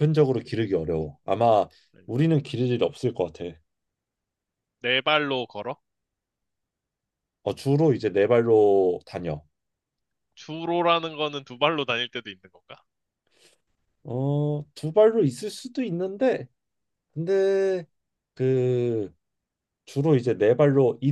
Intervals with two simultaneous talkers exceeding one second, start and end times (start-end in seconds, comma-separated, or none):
none